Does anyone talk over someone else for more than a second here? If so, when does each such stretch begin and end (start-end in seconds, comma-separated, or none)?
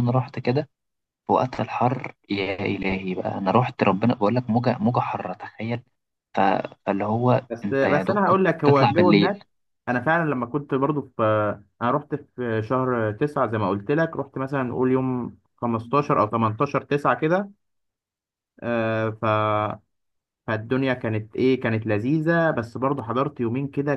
7.5-9.3